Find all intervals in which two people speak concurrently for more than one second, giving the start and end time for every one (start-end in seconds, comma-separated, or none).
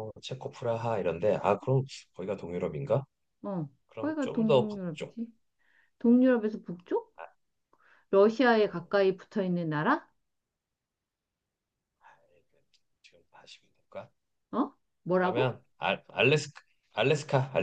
3.9-5.2